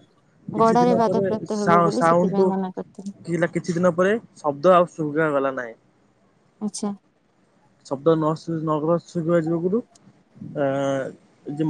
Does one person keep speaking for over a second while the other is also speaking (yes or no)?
yes